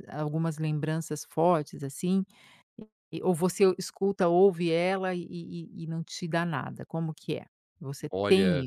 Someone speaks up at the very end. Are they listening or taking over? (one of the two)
taking over